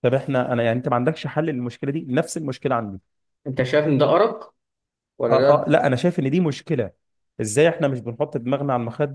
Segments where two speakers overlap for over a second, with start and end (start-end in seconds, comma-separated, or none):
none